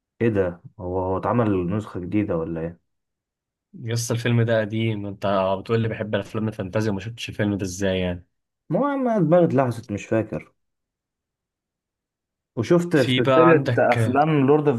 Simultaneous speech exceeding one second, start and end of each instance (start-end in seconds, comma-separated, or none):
12.9-14.2